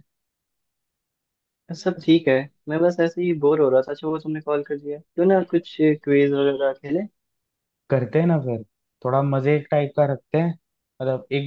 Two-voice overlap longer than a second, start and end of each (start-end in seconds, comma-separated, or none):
none